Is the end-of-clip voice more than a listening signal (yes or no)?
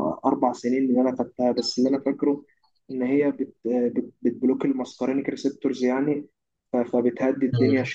no